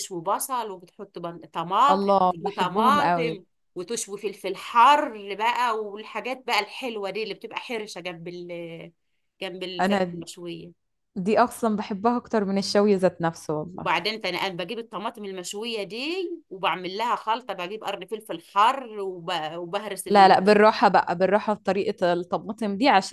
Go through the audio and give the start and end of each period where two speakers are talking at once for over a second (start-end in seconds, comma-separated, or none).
1.9-3.4